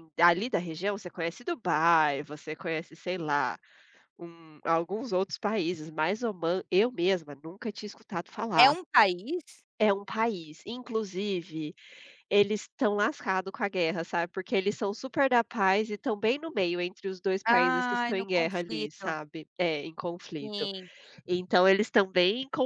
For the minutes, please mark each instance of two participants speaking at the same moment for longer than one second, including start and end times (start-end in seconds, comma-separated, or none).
17.5-19.1